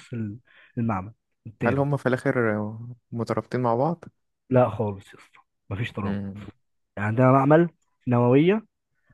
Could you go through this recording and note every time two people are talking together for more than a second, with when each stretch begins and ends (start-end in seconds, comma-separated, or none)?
none